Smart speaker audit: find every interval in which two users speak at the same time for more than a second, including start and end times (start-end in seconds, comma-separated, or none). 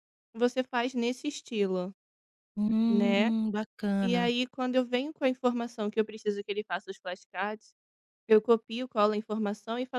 none